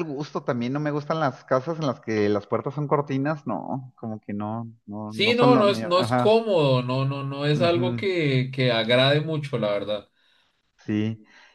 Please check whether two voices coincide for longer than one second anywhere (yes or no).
yes